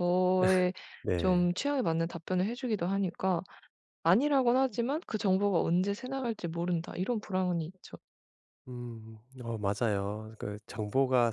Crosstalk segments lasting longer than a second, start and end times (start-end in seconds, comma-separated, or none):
none